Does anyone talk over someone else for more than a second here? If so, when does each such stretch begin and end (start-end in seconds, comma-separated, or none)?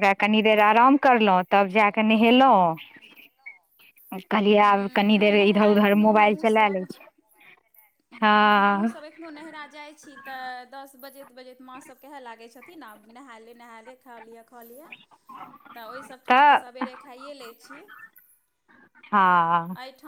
4.6-6.8